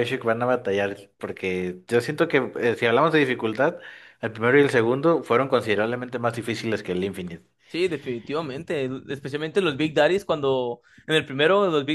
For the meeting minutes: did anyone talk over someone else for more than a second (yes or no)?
no